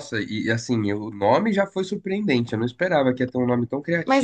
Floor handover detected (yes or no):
yes